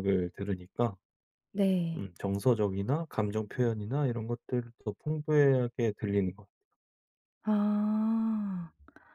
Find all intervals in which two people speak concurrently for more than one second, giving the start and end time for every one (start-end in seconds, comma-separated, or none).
none